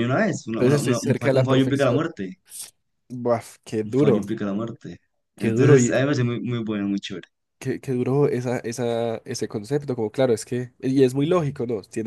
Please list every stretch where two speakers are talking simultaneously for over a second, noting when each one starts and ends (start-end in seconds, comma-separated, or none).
0.5-2.0